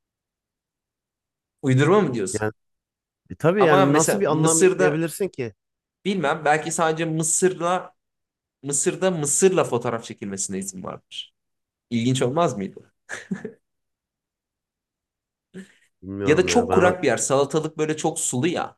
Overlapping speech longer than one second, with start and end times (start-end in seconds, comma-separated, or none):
3.6-5.0